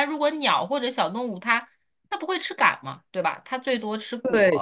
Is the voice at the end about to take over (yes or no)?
yes